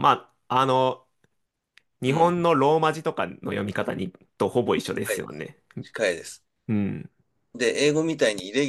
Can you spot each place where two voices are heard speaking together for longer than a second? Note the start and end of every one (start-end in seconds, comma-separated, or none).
none